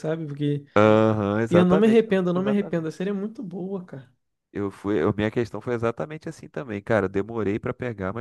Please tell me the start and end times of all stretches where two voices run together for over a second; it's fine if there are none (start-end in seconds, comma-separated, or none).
1.5-3.0